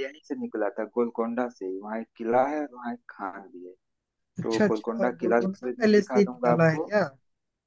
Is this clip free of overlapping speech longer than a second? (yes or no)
no